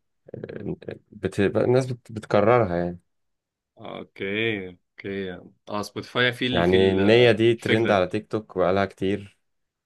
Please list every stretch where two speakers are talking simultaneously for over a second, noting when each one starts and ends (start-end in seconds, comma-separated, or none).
6.5-8.1